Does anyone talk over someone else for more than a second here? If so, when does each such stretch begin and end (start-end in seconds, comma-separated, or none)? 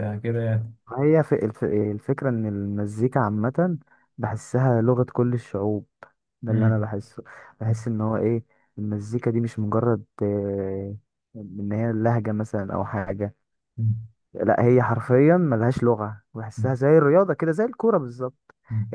none